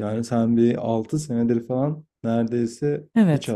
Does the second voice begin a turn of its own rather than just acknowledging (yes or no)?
yes